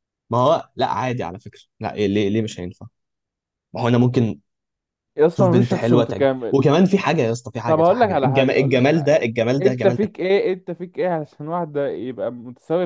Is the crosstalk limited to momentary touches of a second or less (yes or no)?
no